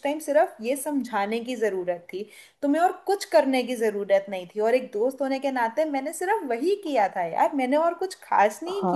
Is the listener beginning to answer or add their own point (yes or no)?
yes